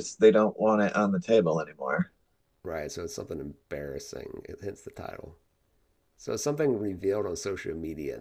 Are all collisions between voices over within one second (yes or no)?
yes